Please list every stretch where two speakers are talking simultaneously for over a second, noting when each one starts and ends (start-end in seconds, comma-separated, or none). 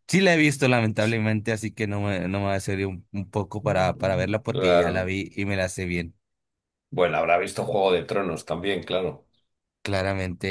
3.6-5.1